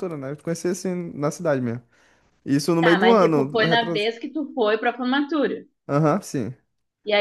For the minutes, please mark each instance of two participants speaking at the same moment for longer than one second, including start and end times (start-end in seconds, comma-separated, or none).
2.8-4.1